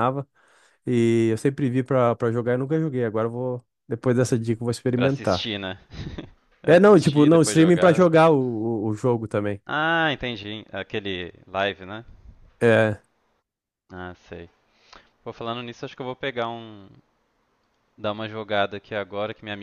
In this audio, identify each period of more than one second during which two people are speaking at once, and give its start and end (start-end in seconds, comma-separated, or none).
6.7-8.1